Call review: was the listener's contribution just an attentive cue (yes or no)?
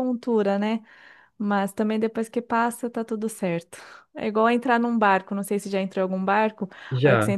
yes